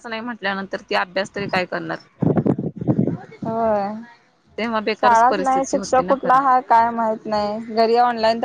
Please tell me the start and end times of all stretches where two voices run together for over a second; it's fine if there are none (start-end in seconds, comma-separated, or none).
5.0-6.4